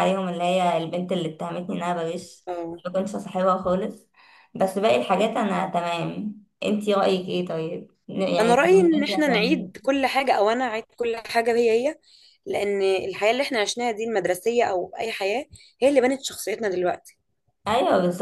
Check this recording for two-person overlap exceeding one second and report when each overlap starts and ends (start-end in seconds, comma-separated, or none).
8.4-9.7